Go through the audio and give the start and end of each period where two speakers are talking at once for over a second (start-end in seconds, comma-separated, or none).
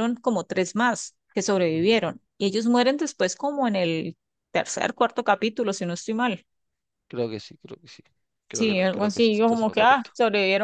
8.5-10.1